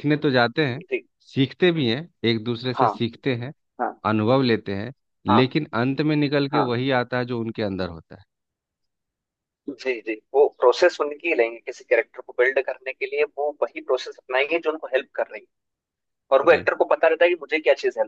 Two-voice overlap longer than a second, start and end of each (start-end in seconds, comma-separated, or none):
none